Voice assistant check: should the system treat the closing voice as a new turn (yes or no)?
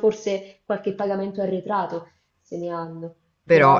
no